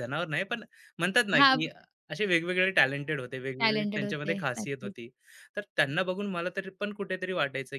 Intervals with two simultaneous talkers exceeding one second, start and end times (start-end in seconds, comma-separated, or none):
3.6-4.9